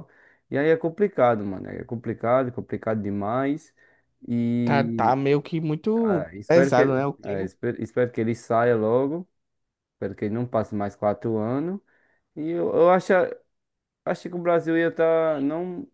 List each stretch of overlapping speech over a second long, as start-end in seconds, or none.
6.0-7.5